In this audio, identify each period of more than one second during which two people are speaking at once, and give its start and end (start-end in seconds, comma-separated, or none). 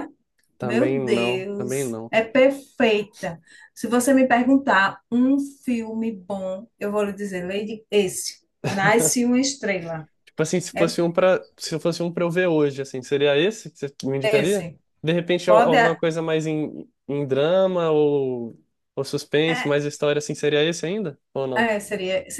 0.6-2.1